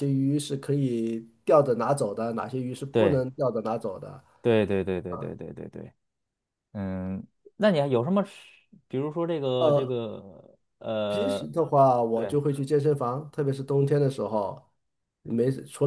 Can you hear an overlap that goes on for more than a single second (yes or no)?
no